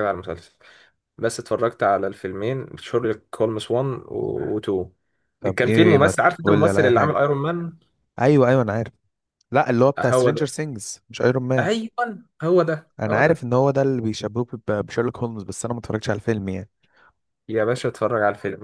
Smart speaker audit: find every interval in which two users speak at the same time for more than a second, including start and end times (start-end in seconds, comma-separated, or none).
5.4-7.2